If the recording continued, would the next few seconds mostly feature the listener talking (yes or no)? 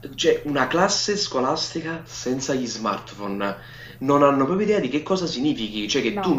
no